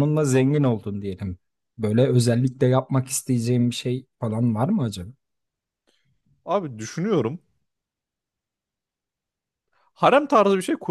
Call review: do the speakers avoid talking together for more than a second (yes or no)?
yes